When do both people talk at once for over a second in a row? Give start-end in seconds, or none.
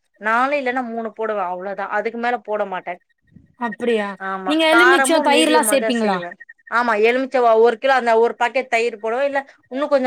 4.5-6.2